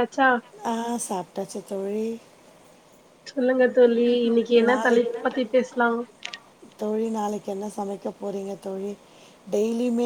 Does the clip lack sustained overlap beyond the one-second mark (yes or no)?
yes